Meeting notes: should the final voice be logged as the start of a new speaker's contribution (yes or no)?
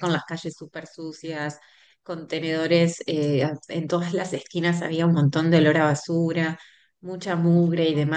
no